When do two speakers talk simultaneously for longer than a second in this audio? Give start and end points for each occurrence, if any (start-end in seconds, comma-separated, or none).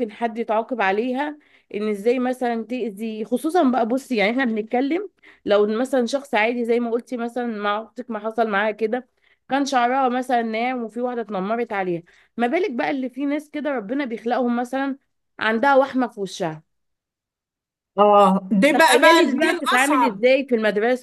18.7-20.2